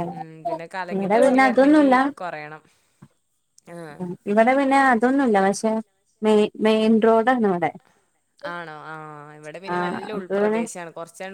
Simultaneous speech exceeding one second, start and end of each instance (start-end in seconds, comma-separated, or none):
none